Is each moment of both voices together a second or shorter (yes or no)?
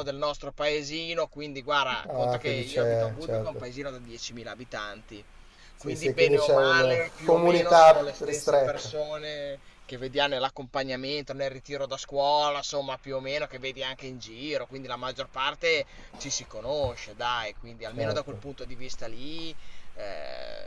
no